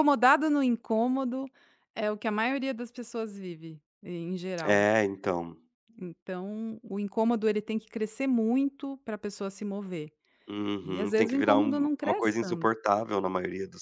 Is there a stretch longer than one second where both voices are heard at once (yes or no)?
yes